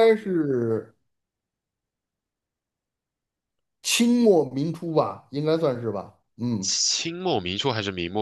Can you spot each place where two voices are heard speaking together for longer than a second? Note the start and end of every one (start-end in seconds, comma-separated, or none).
none